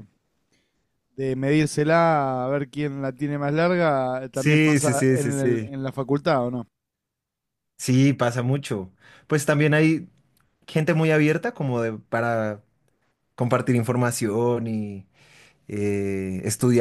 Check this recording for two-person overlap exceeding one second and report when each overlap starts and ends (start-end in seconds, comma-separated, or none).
4.3-5.7